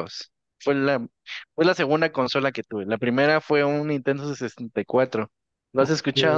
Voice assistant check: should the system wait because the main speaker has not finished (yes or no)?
no